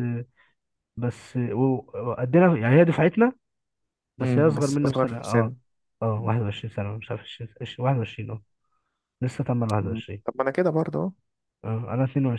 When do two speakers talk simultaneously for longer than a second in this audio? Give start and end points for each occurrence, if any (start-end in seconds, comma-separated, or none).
4.2-5.5